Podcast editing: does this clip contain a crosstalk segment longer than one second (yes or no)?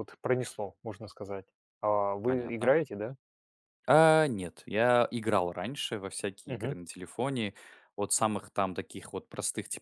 no